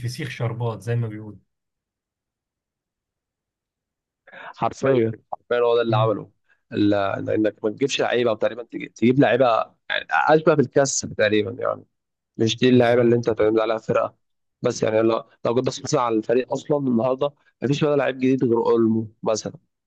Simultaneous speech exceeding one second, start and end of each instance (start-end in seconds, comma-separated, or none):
none